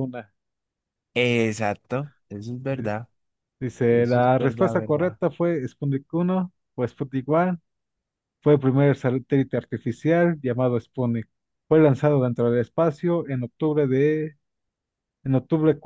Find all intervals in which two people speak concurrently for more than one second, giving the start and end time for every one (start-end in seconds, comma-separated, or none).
3.9-5.2